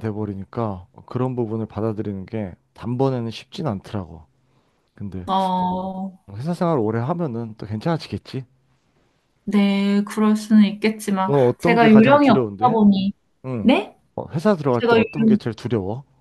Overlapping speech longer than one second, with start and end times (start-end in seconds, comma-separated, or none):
11.3-12.8